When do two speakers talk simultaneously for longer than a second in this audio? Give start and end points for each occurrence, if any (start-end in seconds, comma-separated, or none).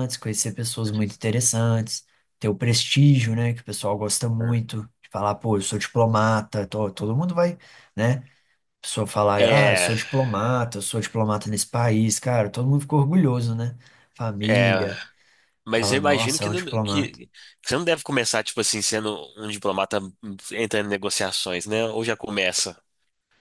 15.7-17.2